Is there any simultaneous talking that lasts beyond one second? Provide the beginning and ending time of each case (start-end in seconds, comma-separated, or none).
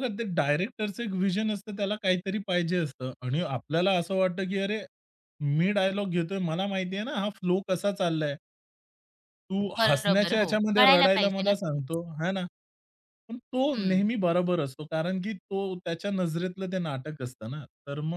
9.8-11.8